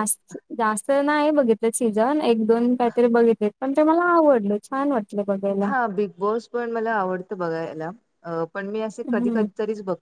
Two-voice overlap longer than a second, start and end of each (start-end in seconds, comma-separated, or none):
none